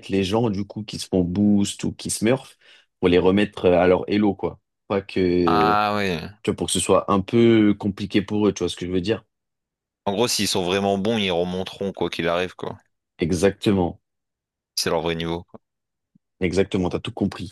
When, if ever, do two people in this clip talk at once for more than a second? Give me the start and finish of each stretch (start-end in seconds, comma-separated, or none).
none